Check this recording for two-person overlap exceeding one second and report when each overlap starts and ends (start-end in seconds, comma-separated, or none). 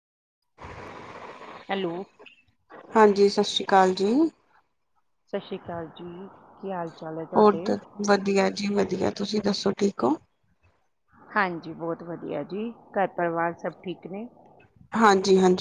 none